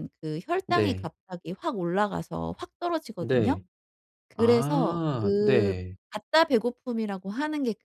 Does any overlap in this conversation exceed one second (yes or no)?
yes